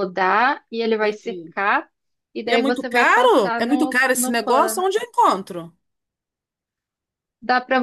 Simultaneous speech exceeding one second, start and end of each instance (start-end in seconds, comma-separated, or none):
2.4-4.8